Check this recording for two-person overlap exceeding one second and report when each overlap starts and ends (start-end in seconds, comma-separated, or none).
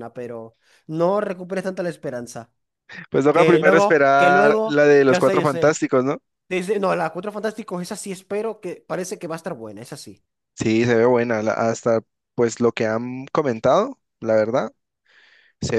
3.3-5.8